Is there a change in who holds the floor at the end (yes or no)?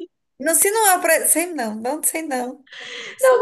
yes